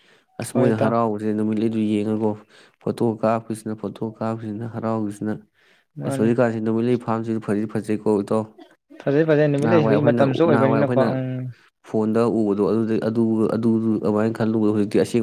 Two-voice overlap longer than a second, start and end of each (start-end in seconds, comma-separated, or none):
9.6-11.1